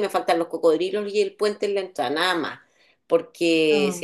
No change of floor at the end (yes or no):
yes